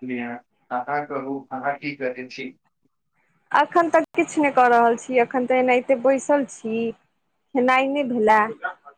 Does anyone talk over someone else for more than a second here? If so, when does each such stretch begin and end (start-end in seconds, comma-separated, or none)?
none